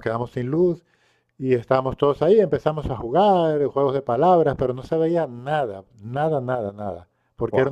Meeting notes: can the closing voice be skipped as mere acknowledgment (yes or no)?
yes